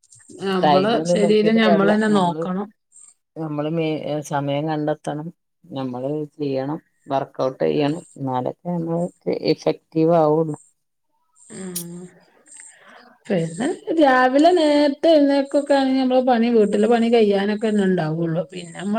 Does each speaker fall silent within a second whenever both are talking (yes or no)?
no